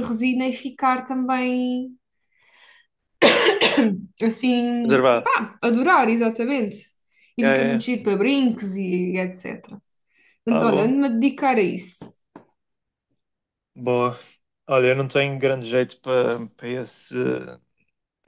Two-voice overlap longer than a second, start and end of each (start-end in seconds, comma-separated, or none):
none